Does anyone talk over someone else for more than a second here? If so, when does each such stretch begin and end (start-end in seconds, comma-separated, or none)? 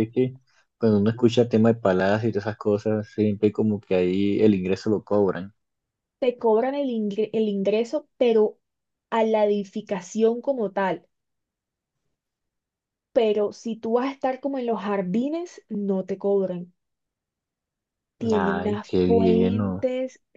18.3-19.8